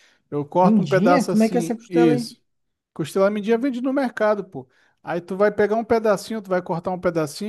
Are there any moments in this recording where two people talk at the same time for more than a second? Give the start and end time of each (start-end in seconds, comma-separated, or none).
0.6-2.3